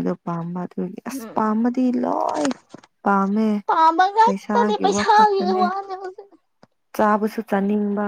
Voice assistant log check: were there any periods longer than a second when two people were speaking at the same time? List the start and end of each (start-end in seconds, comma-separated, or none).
4.2-5.6